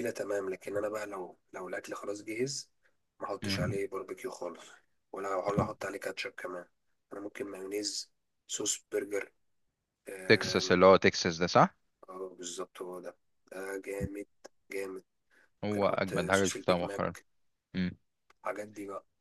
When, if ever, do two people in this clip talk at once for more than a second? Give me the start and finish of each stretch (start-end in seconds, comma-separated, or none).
15.6-17.1